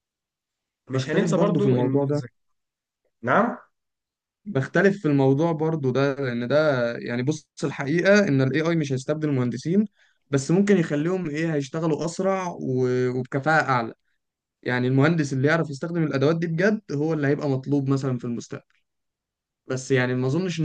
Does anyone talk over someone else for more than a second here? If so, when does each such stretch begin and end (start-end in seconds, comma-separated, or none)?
0.9-2.2